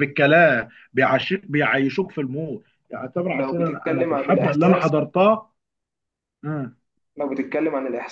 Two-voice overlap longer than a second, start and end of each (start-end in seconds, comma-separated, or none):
3.3-4.9